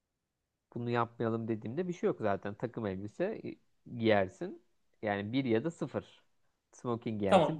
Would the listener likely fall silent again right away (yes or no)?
no